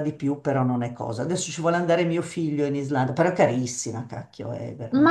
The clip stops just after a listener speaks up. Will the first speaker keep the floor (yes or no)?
no